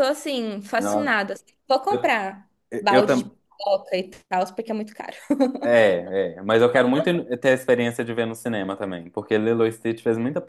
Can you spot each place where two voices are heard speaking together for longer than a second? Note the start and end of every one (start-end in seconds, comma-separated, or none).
none